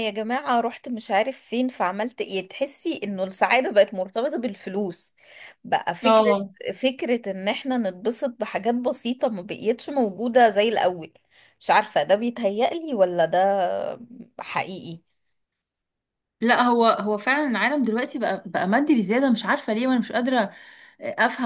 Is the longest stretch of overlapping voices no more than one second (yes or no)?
yes